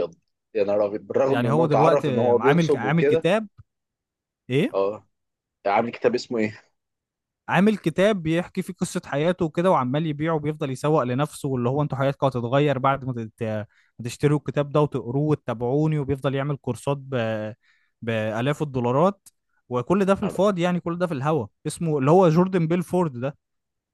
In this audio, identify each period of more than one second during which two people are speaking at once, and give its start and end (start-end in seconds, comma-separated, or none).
1.3-3.3